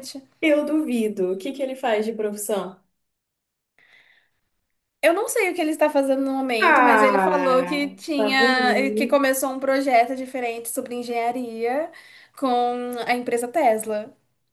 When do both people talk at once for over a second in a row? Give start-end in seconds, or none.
6.6-9.2